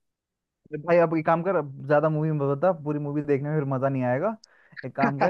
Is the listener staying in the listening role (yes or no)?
yes